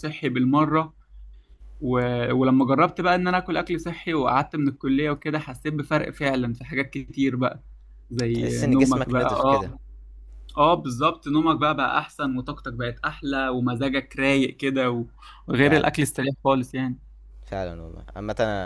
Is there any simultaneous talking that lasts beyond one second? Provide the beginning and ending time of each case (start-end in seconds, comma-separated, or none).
8.3-9.7